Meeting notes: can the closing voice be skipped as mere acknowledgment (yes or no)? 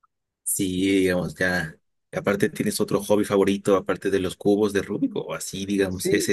no